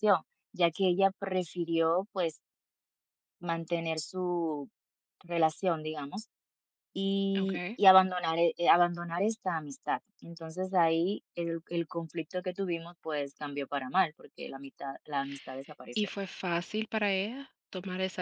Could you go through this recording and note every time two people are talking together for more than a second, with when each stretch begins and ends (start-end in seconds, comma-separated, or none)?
none